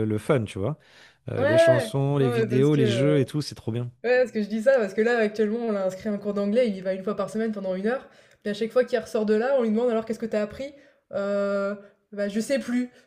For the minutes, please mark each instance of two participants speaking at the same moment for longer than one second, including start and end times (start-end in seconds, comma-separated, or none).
1.4-3.2